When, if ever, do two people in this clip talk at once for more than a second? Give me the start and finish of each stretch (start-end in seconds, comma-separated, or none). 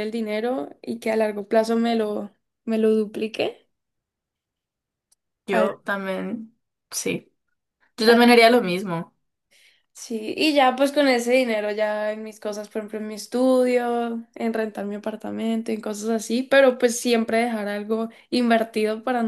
none